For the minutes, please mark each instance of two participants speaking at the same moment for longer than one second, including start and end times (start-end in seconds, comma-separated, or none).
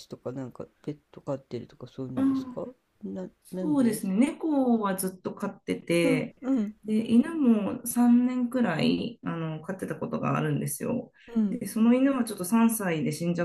none